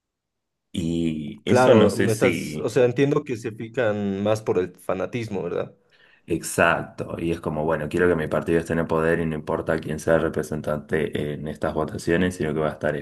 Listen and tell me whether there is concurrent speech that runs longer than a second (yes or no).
yes